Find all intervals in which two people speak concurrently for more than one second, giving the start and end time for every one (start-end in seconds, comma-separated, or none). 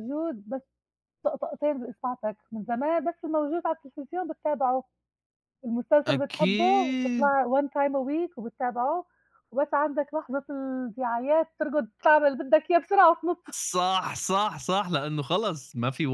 6.1-7.3